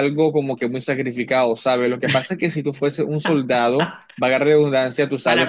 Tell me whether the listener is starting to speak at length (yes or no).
yes